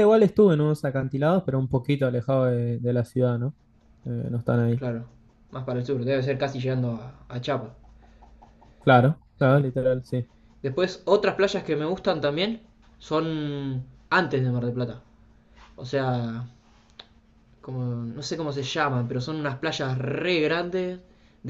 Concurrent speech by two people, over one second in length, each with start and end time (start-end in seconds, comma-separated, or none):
none